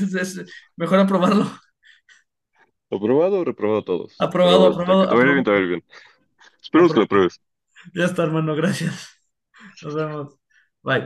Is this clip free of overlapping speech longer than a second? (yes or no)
no